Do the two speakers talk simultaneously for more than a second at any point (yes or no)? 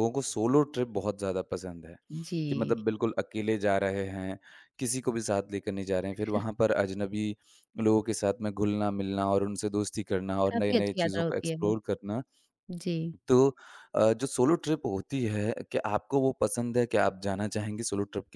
yes